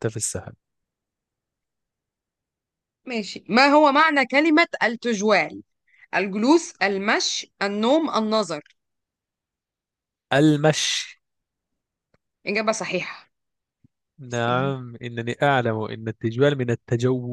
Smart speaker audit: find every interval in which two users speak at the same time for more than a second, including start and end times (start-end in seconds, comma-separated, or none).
none